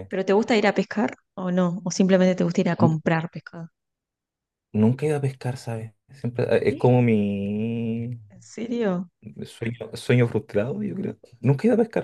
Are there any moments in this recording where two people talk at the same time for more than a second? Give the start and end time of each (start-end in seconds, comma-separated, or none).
none